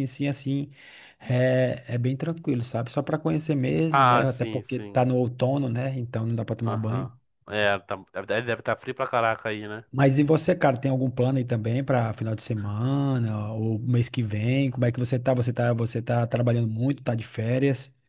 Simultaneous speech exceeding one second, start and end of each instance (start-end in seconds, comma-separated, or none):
3.9-5.1